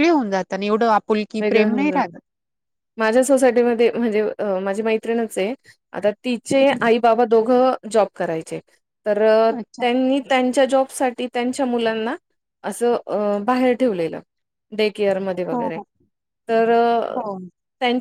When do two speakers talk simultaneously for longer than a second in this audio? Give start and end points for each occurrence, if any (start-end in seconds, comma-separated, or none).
none